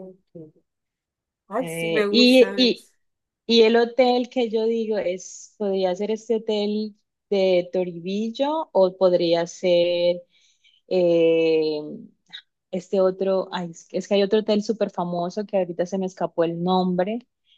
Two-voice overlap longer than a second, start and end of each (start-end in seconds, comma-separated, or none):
1.6-2.9